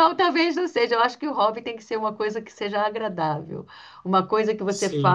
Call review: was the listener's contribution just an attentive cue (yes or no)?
yes